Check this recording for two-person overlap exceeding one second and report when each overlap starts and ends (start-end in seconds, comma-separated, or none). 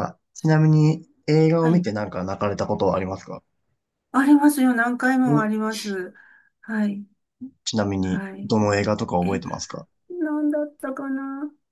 none